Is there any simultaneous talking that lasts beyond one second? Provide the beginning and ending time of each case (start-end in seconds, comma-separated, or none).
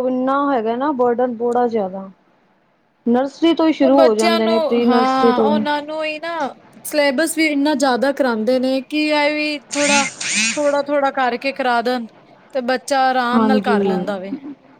4.2-5.6